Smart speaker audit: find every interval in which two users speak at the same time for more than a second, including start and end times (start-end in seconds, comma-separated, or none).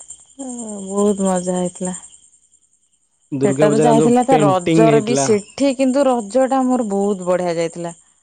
3.5-5.2